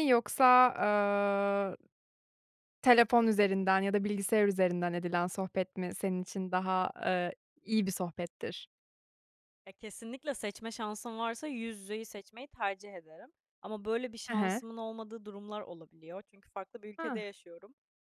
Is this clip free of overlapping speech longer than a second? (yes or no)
yes